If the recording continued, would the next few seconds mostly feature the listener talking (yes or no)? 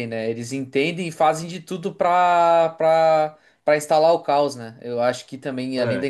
no